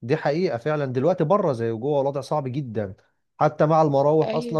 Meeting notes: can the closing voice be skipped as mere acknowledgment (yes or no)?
yes